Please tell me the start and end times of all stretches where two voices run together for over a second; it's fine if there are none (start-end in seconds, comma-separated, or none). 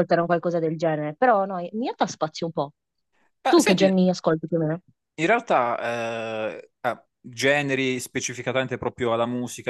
none